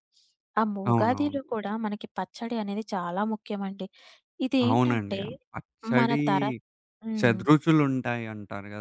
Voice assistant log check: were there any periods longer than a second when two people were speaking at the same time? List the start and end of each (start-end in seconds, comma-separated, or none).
none